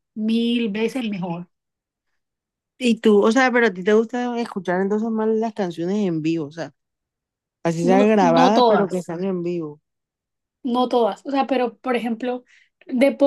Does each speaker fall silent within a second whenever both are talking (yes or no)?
no